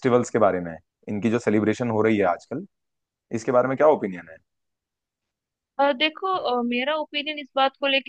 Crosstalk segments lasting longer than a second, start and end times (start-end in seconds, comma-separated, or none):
none